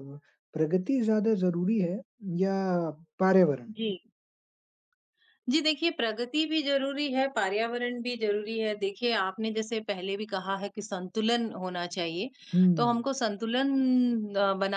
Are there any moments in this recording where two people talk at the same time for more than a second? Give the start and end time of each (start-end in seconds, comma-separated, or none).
none